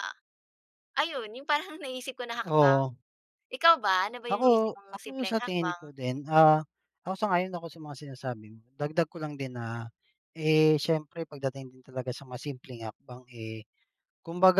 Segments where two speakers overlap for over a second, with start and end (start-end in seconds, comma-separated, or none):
4.3-5.9